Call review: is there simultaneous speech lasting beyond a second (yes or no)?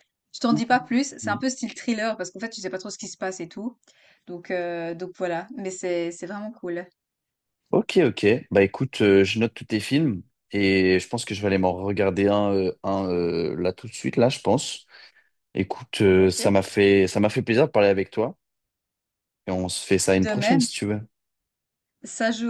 no